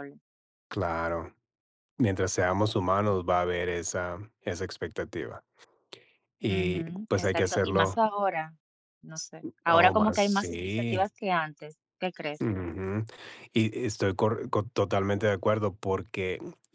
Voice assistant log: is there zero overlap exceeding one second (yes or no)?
no